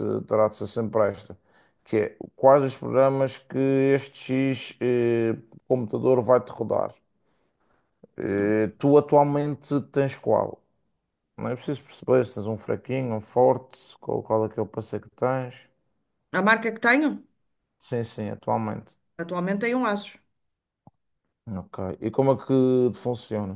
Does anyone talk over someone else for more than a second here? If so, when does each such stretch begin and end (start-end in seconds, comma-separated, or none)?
none